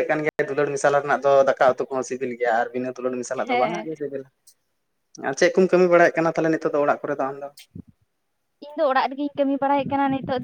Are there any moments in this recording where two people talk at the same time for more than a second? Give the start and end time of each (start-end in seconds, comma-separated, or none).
none